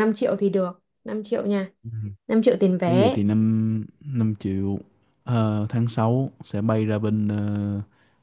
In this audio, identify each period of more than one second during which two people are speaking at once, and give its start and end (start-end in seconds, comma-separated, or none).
none